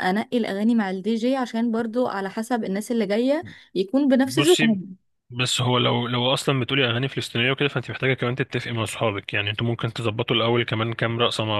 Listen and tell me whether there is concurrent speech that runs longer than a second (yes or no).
no